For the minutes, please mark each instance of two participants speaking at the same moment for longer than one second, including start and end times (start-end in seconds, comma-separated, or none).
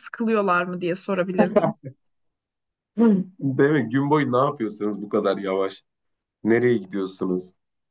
none